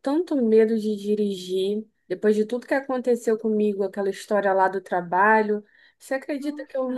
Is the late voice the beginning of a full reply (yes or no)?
no